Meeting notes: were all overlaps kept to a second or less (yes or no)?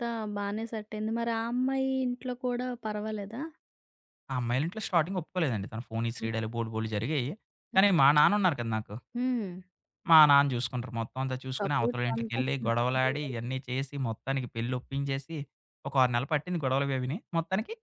no